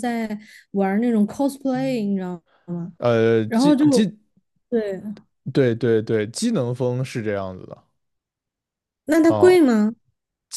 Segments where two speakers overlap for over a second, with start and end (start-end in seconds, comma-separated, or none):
none